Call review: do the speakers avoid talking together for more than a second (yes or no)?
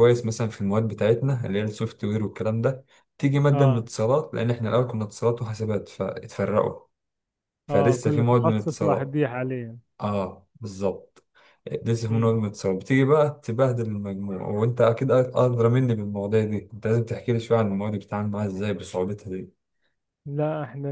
no